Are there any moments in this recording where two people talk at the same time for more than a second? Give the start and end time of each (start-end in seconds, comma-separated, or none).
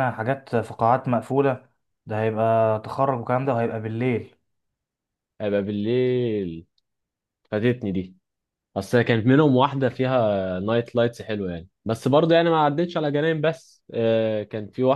none